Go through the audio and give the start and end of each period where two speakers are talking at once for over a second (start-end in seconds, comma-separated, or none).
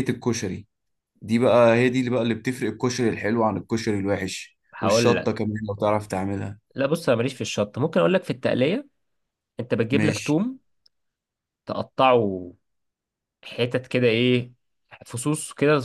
none